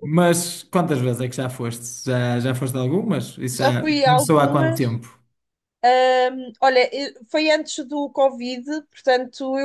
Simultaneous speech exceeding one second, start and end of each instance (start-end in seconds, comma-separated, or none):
3.5-5.0